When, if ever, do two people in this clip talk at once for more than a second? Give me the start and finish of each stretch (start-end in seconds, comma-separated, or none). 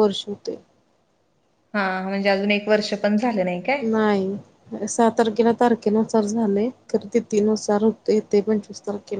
none